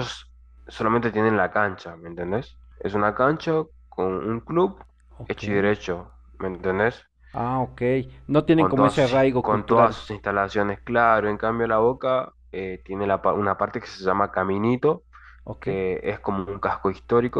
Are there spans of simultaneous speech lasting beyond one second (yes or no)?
yes